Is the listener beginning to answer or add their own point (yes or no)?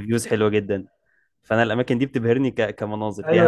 yes